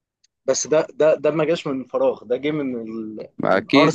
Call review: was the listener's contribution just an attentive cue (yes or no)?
no